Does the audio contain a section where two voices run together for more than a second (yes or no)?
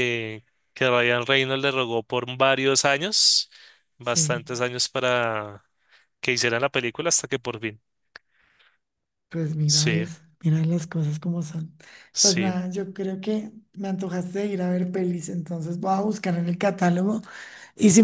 no